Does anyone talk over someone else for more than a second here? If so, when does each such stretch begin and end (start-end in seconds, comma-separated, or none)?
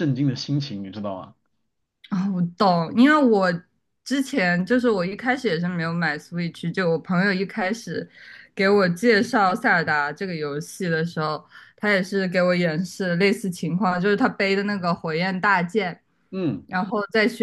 none